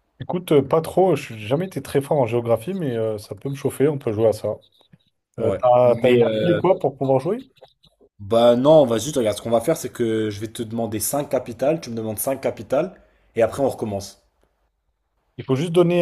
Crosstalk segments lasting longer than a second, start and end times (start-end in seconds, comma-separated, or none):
5.4-6.6